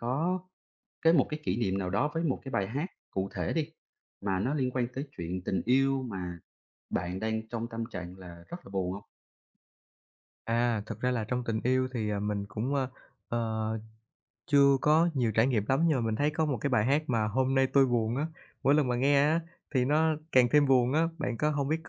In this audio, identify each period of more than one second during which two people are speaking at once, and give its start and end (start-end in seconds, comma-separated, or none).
none